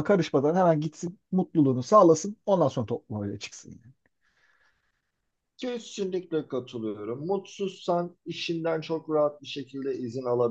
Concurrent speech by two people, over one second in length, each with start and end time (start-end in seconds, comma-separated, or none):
none